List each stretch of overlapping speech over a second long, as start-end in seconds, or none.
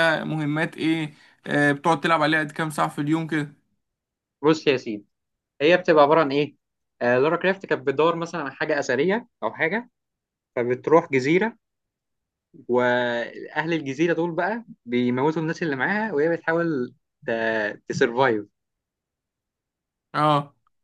none